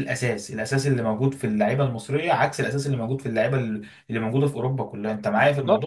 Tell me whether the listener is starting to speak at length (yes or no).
yes